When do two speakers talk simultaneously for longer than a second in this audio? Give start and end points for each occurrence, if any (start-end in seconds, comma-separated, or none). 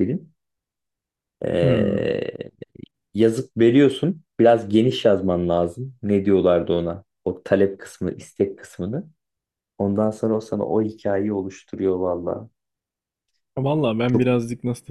none